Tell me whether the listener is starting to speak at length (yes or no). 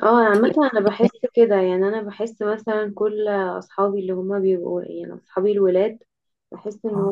no